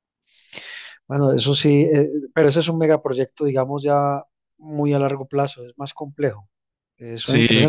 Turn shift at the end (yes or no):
no